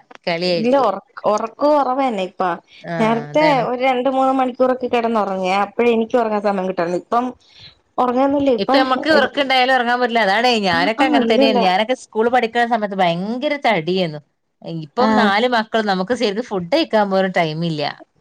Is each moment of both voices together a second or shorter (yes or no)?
yes